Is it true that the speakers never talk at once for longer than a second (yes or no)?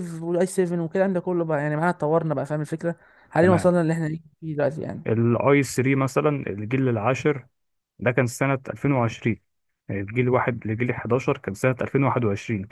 yes